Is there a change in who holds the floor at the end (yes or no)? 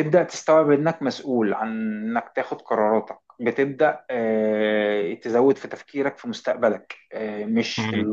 no